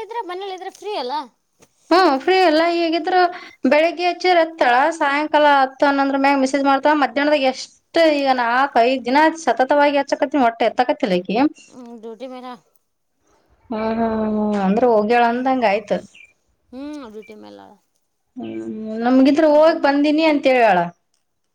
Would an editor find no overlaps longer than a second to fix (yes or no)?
yes